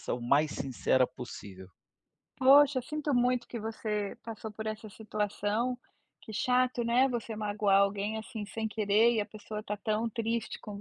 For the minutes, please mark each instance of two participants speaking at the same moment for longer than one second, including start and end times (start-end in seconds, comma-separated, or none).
none